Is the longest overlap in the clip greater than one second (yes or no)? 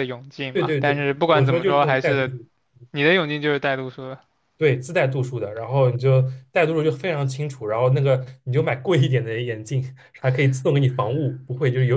yes